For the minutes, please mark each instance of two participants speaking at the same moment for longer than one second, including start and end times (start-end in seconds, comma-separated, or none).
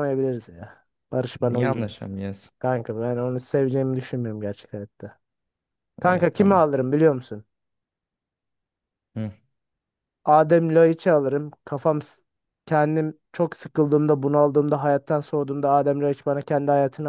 none